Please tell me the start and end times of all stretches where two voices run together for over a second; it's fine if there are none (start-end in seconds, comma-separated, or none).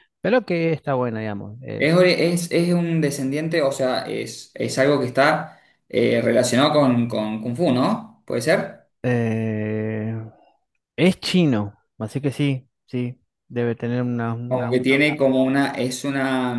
none